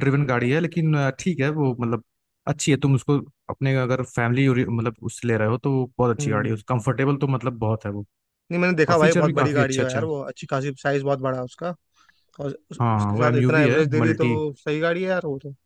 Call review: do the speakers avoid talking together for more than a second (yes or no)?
no